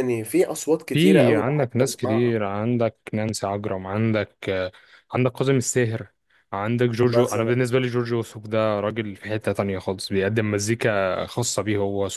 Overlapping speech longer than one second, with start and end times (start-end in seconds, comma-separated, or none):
0.9-2.4